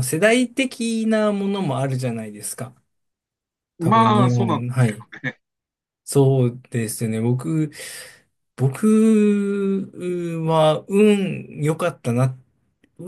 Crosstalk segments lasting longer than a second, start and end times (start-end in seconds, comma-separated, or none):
3.8-5.1